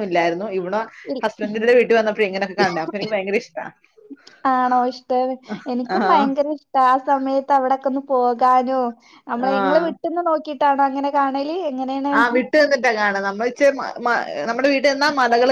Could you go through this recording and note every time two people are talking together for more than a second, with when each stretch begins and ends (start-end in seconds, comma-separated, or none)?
none